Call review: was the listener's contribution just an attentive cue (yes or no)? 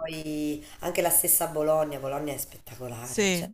yes